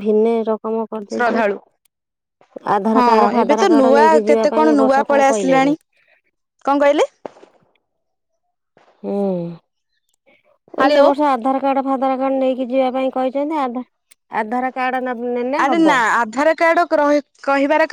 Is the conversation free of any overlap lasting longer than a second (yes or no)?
no